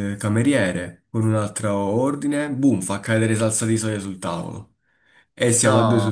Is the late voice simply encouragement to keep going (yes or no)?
yes